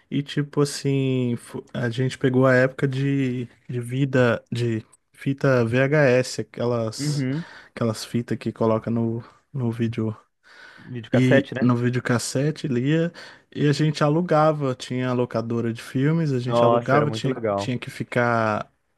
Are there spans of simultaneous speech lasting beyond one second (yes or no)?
yes